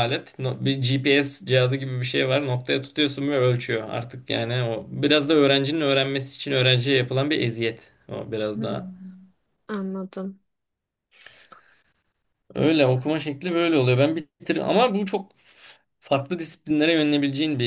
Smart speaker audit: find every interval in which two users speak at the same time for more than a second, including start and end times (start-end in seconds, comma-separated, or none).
none